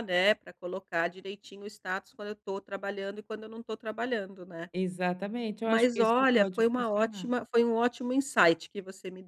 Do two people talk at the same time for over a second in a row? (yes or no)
yes